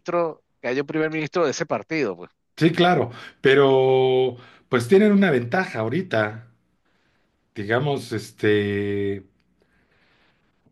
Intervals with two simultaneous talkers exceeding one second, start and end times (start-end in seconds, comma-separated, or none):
none